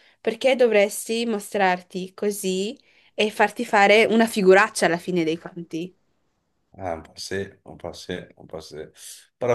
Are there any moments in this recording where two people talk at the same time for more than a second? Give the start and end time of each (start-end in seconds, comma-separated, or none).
none